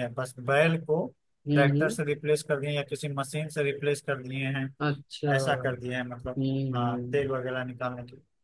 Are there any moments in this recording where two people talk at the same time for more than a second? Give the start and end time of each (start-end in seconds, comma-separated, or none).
5.3-7.2